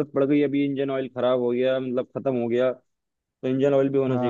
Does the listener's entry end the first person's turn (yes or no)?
yes